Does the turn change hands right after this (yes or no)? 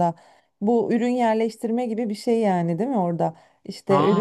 no